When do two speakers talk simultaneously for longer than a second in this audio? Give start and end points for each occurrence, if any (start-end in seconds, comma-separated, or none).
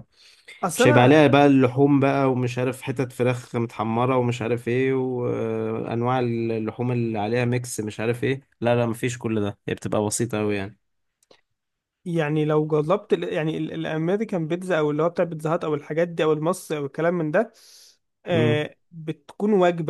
none